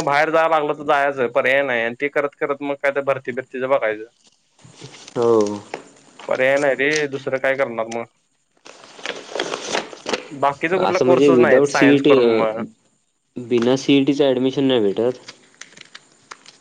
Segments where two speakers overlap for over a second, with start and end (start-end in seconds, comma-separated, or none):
10.9-12.1